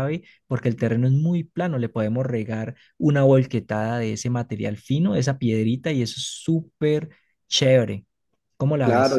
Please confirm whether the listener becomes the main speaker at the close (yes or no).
yes